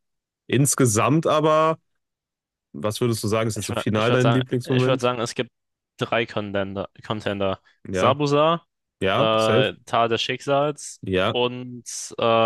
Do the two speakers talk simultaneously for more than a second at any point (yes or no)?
yes